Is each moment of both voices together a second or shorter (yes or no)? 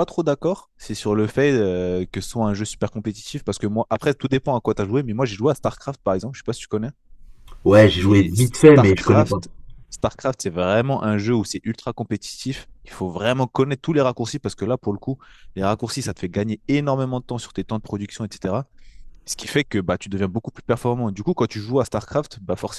no